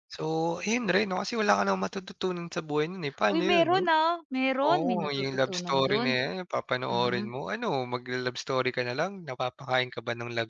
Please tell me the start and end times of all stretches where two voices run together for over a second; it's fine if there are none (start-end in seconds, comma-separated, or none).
4.6-6.2